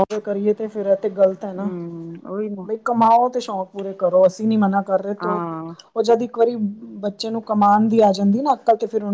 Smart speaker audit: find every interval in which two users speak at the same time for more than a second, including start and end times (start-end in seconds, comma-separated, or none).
none